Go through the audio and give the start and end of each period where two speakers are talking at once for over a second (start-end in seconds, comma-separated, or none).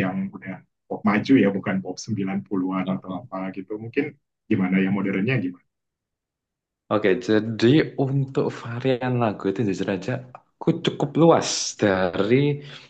none